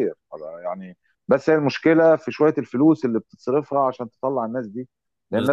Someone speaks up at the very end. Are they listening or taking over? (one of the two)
listening